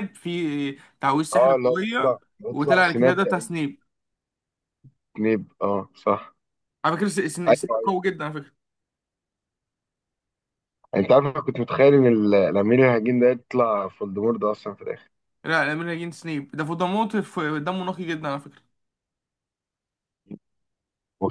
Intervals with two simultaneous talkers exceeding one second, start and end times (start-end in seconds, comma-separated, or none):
1.3-3.6